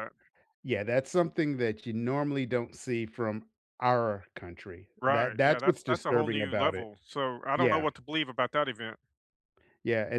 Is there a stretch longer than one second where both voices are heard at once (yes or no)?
yes